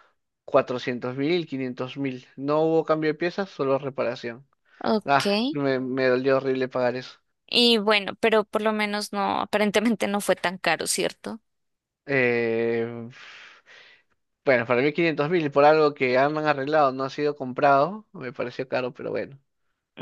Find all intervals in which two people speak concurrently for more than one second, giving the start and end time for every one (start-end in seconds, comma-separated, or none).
none